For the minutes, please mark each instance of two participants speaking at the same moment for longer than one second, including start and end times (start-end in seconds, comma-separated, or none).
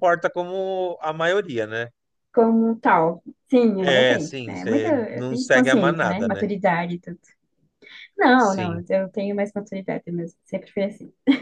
3.8-6.4